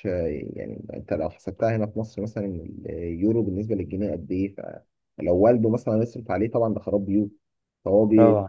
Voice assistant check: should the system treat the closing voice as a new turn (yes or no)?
no